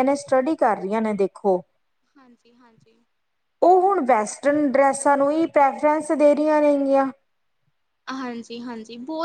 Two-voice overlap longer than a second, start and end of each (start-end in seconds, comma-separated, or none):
none